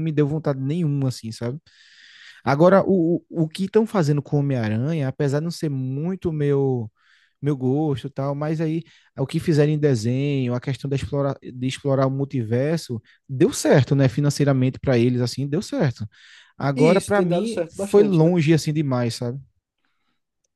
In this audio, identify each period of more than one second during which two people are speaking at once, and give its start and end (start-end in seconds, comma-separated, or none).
16.8-18.3